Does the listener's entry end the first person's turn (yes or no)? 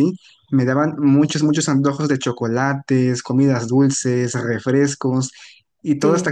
no